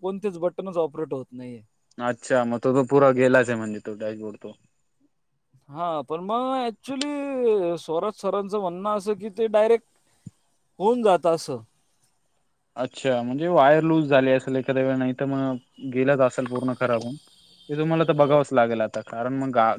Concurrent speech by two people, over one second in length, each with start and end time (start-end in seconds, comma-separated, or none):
none